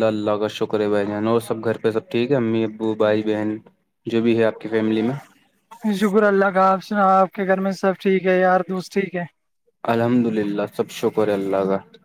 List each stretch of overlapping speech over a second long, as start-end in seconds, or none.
none